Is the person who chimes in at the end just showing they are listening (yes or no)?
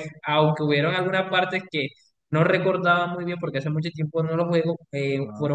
yes